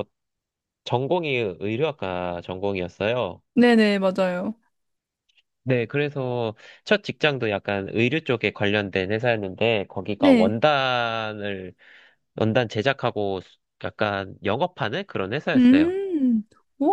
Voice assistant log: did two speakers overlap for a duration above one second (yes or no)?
no